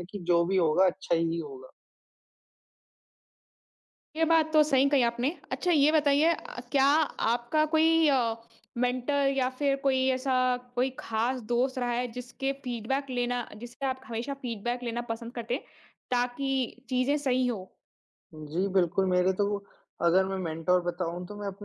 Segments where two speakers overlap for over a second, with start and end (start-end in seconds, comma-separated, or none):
none